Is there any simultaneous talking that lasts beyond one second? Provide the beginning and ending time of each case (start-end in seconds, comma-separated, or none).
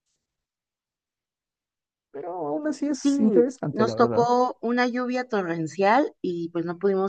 3.0-4.3